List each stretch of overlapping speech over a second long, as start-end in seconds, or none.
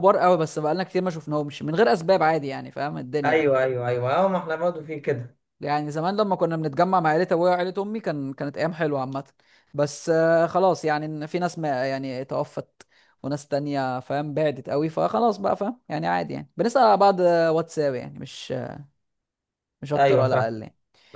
none